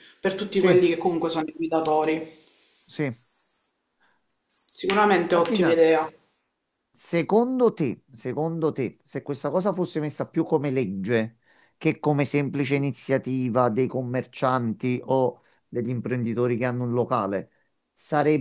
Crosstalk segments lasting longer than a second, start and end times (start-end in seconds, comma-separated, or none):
none